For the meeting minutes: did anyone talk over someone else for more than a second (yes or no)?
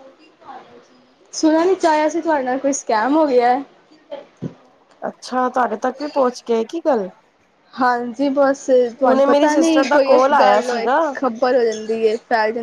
yes